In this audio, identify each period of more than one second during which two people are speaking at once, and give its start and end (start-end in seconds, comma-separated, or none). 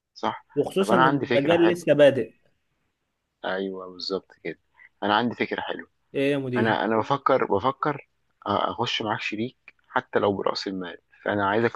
0.5-1.9